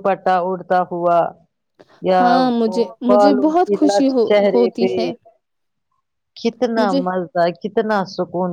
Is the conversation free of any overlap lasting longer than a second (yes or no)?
no